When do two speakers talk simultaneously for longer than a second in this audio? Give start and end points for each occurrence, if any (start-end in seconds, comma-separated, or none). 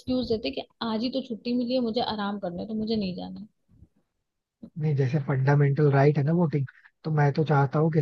none